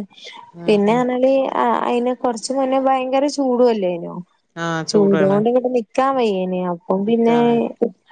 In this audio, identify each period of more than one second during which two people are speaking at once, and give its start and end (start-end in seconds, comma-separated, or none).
none